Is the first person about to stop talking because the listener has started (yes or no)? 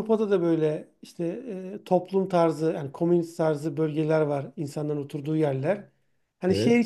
no